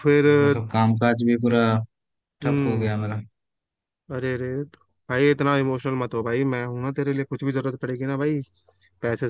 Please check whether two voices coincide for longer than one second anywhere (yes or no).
no